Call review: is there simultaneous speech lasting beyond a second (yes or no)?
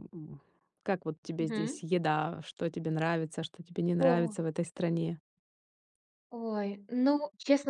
no